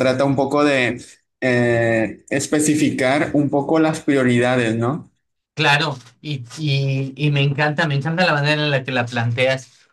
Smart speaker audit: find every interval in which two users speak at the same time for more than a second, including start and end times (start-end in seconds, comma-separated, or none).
none